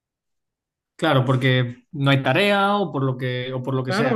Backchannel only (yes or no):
no